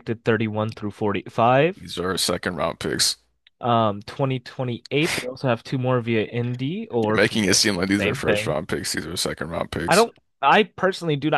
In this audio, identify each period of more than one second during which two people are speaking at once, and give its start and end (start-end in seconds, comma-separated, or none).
7.0-8.6